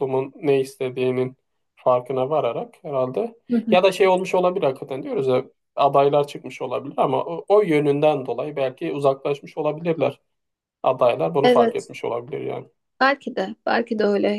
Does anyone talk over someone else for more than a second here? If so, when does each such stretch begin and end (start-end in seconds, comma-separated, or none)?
none